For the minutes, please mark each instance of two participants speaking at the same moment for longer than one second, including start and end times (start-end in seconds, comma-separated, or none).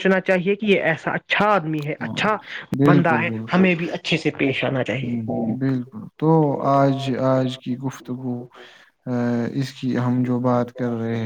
none